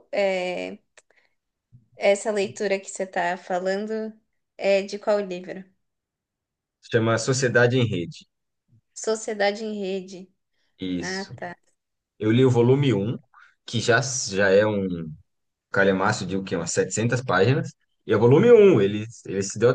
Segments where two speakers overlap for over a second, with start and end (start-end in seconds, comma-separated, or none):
none